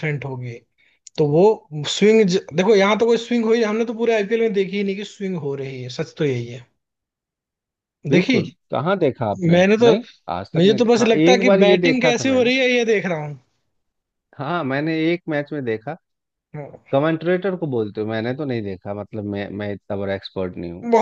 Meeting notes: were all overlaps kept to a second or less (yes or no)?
no